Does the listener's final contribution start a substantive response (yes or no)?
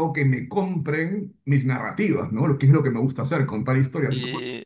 yes